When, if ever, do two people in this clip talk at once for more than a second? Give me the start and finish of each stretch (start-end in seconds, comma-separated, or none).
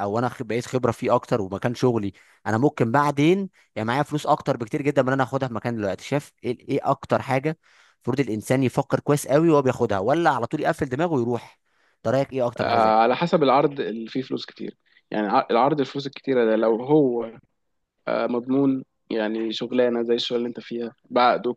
none